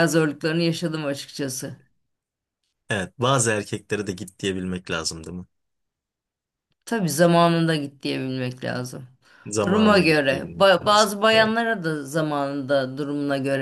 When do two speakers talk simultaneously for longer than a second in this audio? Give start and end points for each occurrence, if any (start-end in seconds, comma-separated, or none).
9.7-11.5